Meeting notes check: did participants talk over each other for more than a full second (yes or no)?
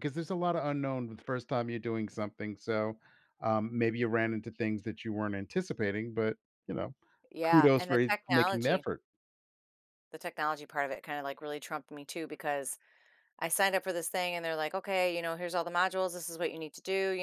yes